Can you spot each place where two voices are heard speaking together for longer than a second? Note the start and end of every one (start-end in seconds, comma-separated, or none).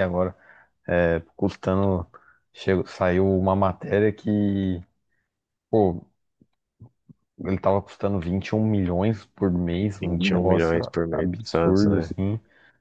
10.0-12.1